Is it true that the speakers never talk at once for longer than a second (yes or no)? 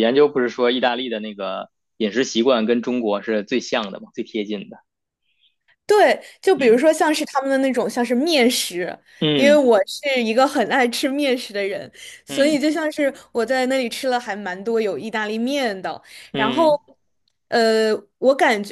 yes